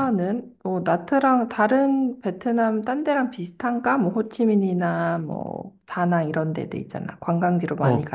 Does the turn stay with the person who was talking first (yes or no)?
no